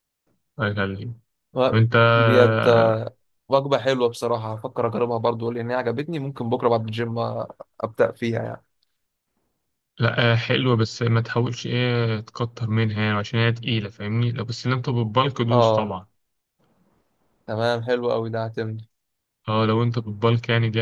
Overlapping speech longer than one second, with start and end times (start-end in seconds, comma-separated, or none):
none